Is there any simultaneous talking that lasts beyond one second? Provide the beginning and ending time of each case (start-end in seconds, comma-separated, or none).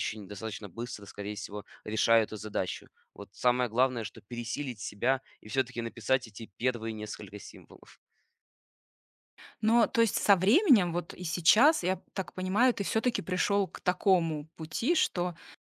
none